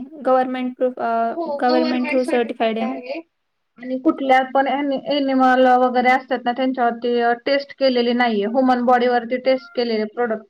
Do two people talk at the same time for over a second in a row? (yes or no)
yes